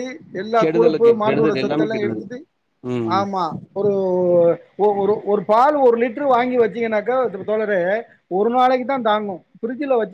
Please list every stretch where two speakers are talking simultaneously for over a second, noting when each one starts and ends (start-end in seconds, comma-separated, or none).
0.6-2.2